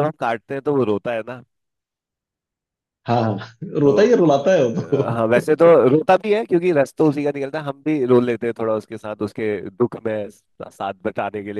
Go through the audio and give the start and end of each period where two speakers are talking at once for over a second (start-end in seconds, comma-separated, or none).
3.8-5.4